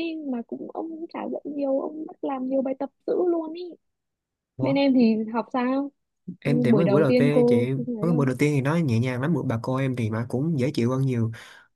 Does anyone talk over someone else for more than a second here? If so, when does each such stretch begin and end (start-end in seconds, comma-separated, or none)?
6.4-8.3